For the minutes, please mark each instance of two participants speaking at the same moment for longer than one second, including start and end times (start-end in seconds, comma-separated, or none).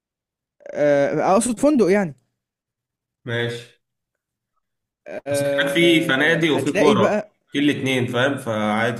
5.3-7.3